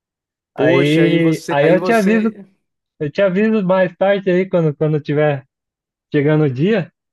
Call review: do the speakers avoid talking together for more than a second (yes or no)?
no